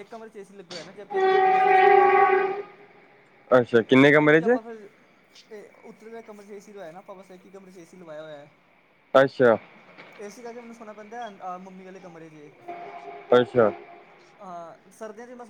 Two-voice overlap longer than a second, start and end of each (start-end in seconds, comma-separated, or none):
none